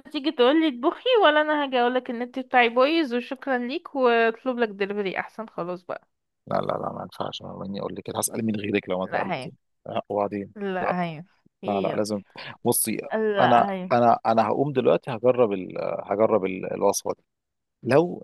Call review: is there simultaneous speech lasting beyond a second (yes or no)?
no